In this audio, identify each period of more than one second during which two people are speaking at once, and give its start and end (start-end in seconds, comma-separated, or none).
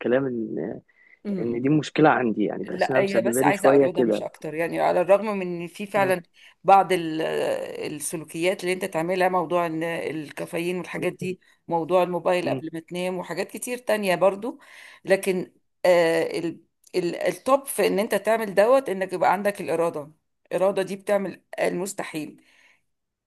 2.7-4.2